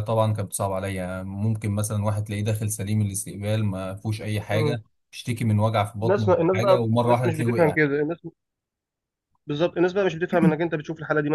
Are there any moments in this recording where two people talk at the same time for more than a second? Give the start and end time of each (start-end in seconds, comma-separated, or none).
6.0-7.8